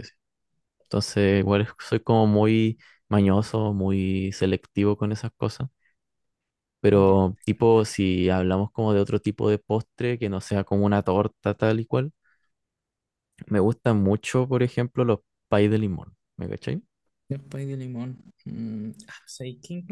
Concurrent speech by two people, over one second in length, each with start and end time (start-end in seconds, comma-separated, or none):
none